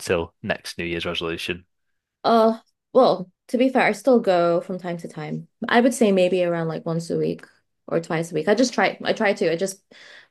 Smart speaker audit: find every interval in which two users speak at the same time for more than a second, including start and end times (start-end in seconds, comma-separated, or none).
none